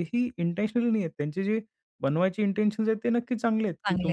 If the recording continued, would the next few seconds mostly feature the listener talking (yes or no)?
no